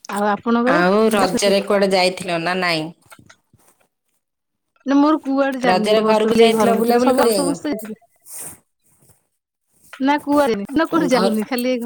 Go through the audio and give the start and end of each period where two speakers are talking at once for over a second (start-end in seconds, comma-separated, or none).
5.7-7.8